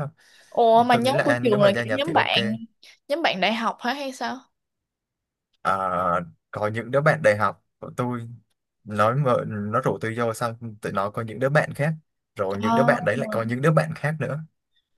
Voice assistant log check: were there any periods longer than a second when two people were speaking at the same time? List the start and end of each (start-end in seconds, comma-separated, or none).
0.9-2.4